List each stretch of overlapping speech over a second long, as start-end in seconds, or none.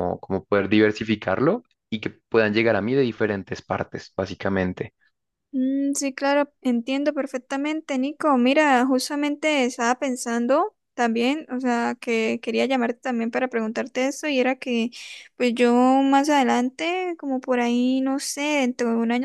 none